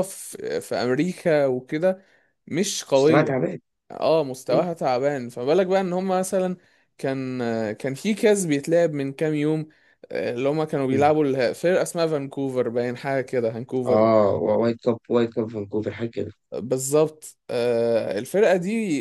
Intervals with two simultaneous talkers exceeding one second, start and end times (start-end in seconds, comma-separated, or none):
none